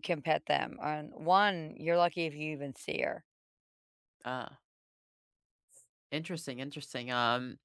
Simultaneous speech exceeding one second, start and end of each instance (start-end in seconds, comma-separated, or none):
none